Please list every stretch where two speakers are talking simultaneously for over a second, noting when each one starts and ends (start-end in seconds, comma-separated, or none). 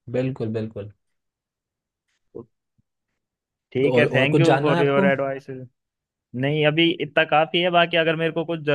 3.8-5.1